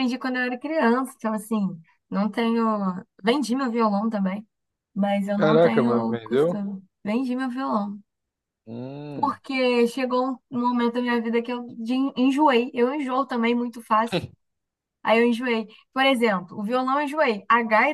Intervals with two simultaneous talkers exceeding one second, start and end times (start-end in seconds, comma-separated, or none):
5.3-6.6